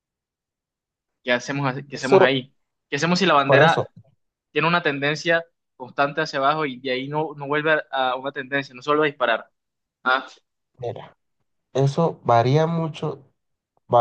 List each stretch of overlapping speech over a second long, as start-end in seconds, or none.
none